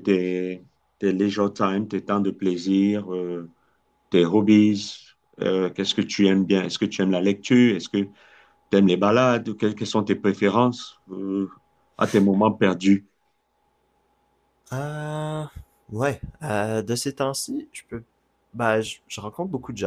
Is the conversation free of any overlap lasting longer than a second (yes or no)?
yes